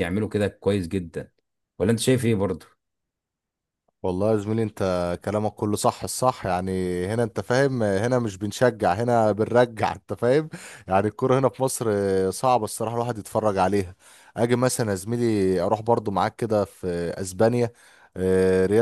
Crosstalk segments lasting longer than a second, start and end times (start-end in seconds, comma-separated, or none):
none